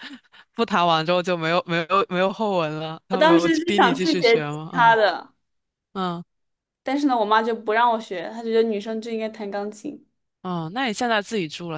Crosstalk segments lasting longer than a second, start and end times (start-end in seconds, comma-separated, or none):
3.1-5.0